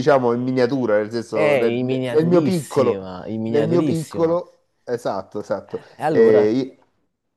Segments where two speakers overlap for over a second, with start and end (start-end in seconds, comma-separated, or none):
1.3-4.4